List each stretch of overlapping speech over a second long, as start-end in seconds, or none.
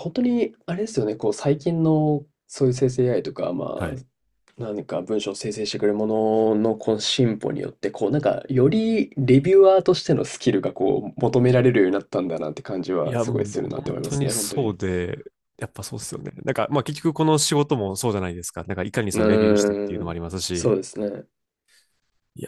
13.0-14.8, 19.1-20.7